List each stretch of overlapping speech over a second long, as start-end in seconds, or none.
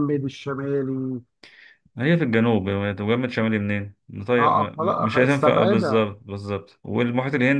4.4-6.1